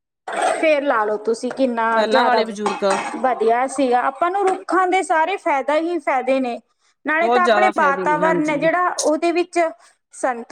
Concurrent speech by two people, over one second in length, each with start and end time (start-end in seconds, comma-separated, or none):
7.1-8.7